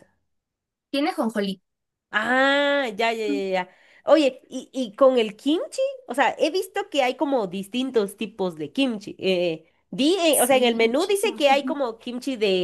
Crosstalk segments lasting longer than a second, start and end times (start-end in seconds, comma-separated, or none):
10.3-11.8